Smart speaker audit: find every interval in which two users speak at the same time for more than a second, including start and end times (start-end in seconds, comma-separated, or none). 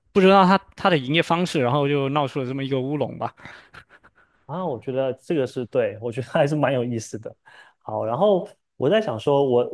none